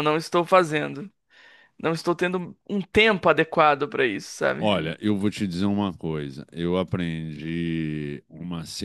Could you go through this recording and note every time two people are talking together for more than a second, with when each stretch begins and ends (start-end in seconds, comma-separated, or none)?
none